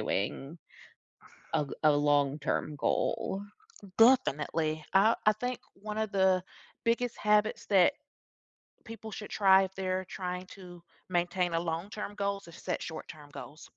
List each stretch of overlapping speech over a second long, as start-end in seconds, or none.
none